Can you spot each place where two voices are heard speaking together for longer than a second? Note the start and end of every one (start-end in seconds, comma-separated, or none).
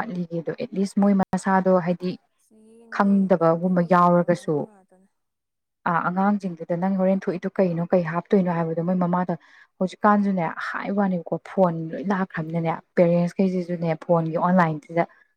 3.0-4.5